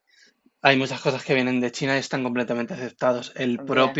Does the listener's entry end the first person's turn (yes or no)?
no